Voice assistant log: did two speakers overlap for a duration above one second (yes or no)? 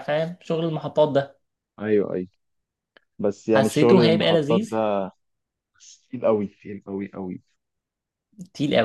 yes